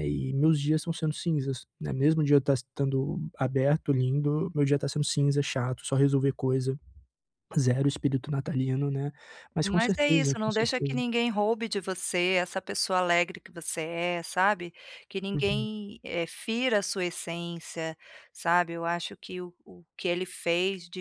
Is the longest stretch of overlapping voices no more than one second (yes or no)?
no